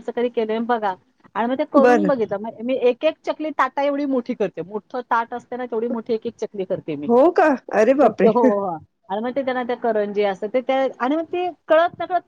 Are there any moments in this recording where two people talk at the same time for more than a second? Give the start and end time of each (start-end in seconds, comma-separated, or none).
none